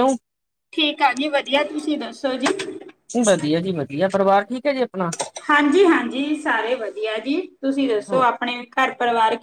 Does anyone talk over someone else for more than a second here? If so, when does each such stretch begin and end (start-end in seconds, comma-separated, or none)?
none